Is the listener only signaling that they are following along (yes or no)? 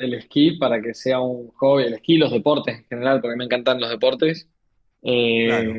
yes